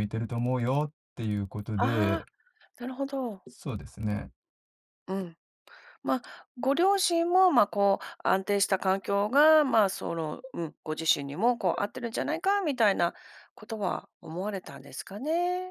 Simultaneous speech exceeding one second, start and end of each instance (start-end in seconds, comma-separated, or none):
none